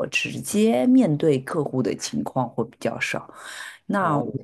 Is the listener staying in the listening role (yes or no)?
yes